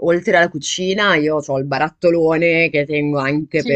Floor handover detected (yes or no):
no